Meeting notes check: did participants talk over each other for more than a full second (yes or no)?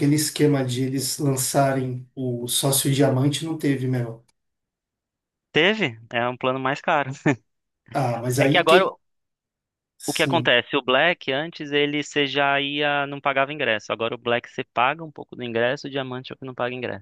no